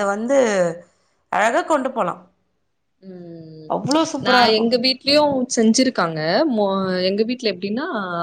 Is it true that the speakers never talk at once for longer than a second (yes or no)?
yes